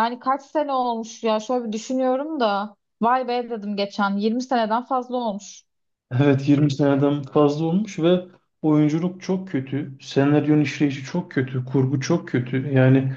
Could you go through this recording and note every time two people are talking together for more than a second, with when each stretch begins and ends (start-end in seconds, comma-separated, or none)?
none